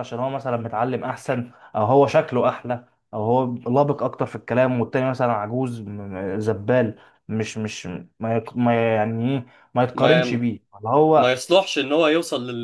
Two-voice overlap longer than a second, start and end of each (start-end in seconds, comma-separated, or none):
none